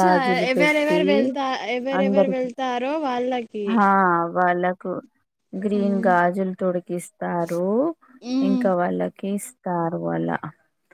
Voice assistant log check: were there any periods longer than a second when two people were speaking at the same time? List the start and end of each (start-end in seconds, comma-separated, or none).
none